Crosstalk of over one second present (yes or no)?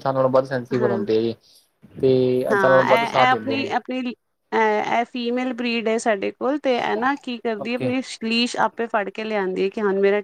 yes